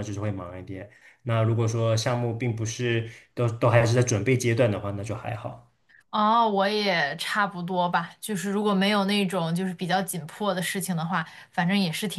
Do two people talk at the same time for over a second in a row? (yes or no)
no